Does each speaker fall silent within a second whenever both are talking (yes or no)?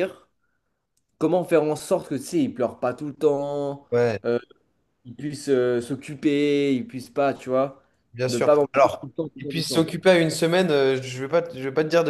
no